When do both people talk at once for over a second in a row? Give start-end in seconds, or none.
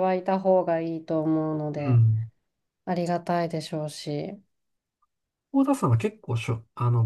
none